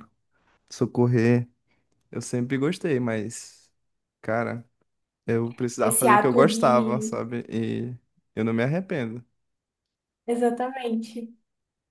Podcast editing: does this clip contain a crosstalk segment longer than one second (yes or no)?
yes